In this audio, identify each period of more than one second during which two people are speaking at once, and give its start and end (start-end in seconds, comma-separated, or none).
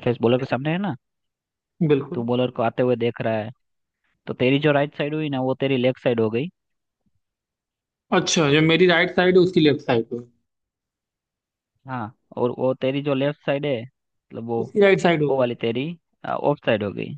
none